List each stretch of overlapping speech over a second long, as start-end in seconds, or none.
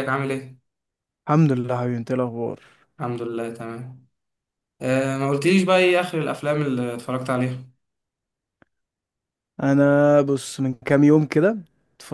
none